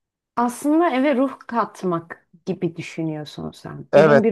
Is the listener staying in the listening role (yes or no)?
no